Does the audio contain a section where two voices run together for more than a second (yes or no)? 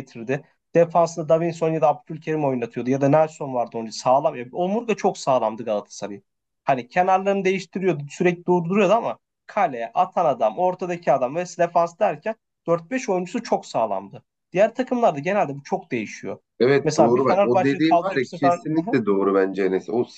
yes